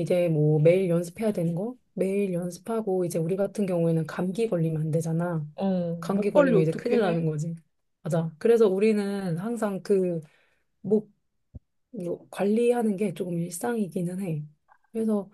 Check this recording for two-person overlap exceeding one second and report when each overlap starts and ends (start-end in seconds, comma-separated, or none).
6.0-7.3